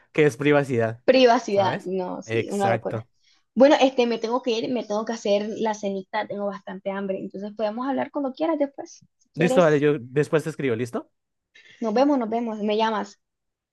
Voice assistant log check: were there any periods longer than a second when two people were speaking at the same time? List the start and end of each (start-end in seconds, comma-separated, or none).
1.5-3.0